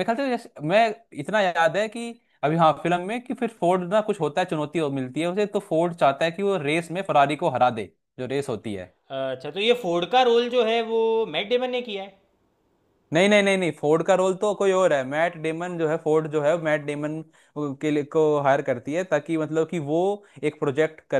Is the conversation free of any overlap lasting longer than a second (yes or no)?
yes